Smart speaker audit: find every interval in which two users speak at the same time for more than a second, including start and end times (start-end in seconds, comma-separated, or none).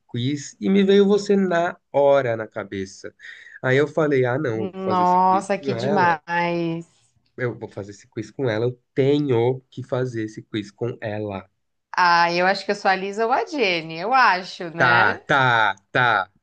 4.9-6.2